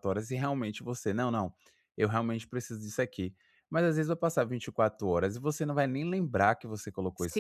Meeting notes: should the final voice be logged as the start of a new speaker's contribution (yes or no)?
yes